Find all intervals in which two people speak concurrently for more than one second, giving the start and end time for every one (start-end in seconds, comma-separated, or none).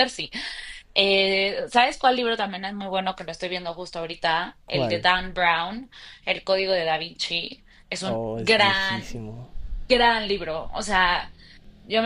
8.0-9.2